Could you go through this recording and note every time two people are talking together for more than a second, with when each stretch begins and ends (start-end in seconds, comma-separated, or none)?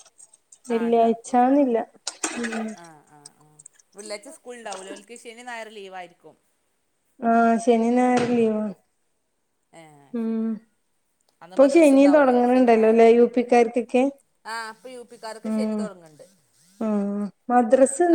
11.5-13.1